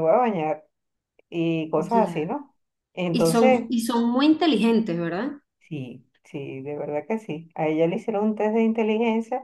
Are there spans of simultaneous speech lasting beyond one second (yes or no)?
no